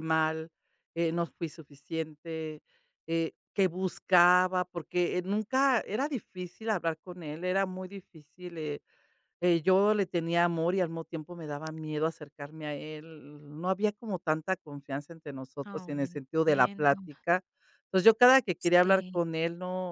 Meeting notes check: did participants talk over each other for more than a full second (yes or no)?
yes